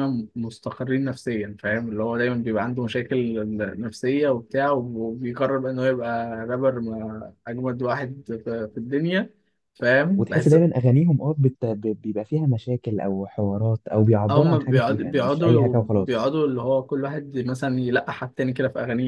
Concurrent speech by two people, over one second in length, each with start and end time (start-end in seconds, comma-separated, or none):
14.3-16.3